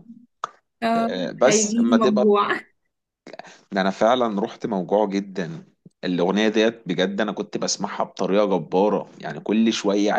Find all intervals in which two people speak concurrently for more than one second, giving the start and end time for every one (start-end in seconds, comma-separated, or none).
1.0-2.3